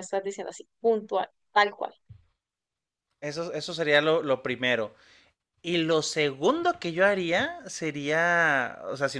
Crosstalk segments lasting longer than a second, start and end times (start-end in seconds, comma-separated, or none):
none